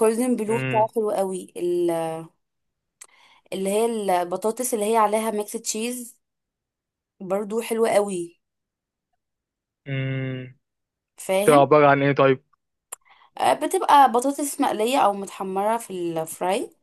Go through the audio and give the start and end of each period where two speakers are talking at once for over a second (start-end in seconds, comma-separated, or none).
none